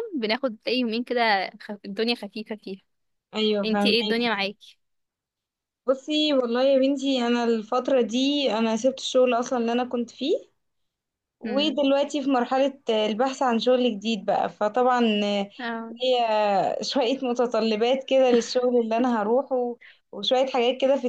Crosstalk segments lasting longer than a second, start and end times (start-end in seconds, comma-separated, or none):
none